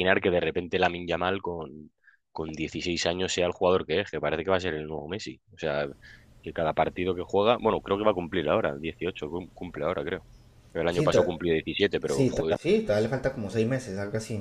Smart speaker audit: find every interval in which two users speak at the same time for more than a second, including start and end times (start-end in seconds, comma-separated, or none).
none